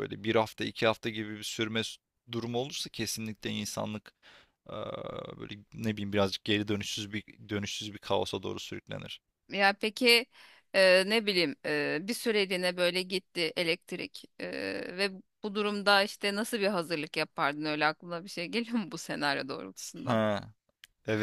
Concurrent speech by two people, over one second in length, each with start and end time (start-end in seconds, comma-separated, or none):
none